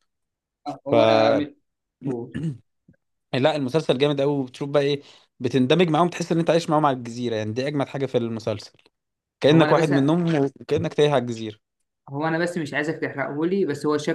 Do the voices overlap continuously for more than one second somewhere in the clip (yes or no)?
no